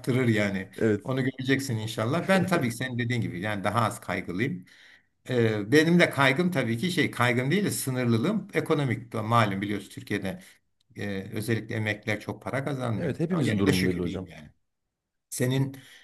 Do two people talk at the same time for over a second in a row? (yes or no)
yes